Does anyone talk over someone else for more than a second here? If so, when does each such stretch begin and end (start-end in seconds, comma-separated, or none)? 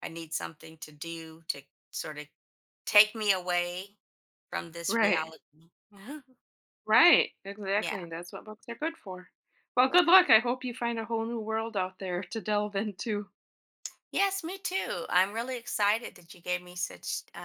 none